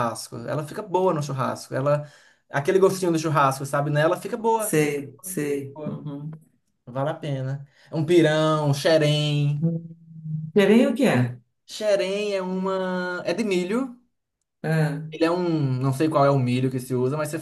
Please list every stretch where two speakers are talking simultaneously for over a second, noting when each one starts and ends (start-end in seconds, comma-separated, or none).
none